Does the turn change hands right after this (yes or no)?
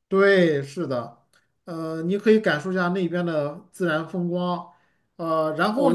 yes